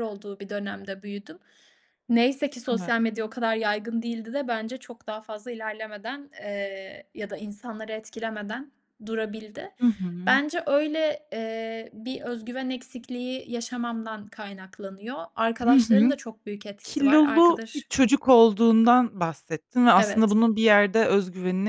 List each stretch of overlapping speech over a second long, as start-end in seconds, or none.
16.8-18.1